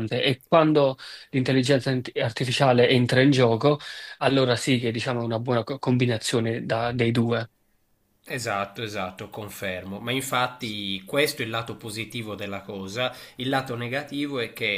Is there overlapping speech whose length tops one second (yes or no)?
no